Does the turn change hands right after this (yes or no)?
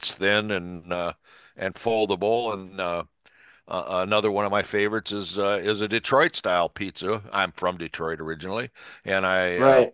no